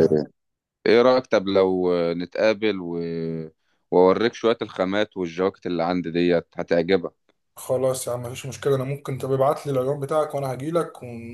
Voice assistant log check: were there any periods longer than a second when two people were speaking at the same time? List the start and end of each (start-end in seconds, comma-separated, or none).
none